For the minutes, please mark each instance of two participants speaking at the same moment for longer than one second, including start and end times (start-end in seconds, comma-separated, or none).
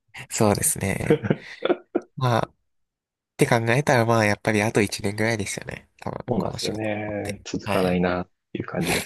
6.3-8.0